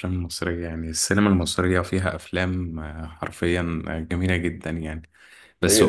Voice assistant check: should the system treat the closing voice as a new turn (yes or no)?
no